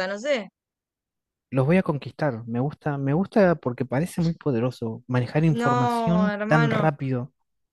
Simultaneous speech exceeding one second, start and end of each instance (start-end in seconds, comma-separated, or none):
5.5-6.9